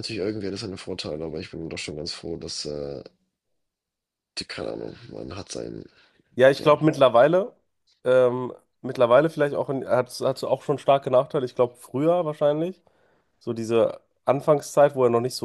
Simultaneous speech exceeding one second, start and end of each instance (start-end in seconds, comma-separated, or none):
none